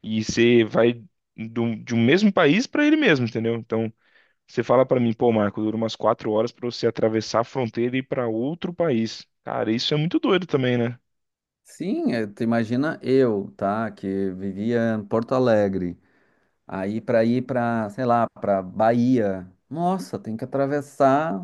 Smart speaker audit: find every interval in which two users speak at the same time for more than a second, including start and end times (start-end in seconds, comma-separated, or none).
none